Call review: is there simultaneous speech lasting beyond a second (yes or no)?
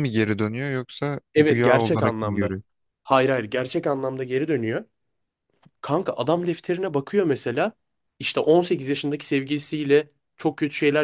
yes